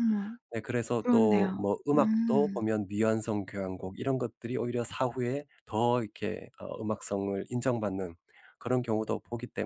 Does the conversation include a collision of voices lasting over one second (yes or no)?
yes